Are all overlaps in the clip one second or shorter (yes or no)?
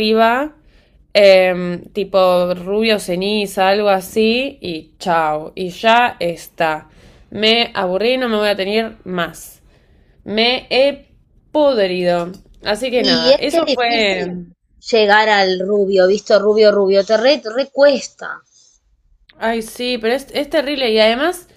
no